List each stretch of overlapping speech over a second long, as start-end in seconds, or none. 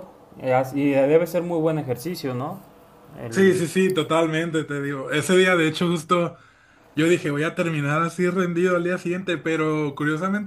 none